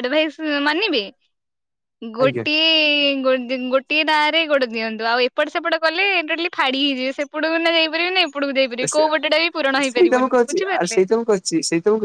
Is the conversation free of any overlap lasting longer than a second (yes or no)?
no